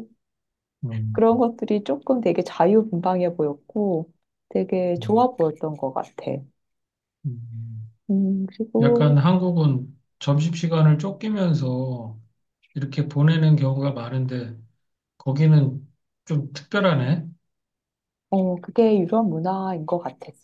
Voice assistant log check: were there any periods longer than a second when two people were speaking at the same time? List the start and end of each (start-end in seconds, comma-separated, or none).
none